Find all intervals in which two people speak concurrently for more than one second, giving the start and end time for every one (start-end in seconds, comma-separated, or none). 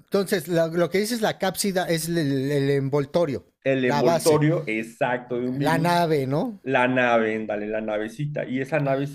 none